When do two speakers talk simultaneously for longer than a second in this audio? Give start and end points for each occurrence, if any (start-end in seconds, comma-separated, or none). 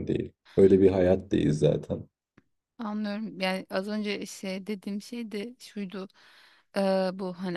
none